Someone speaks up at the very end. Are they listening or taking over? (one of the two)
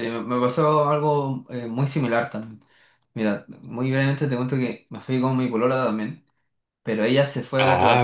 listening